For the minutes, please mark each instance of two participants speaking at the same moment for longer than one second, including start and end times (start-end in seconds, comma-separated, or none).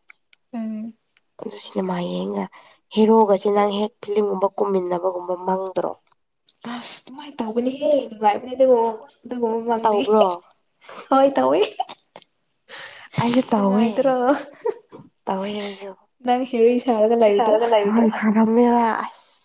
16.2-17.6